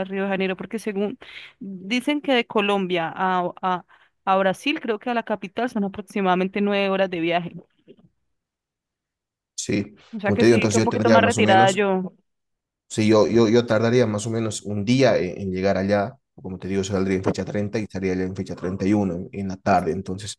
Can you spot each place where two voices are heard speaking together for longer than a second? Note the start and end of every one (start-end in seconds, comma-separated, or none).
10.1-11.8